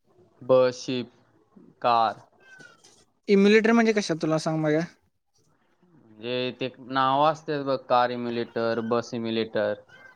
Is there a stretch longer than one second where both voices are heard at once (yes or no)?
no